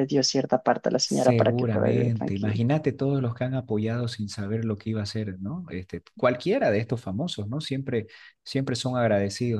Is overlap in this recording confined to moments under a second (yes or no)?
no